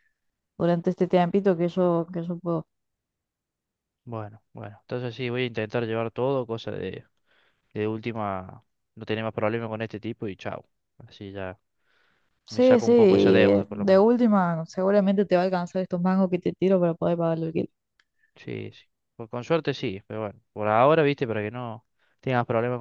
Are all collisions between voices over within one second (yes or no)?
no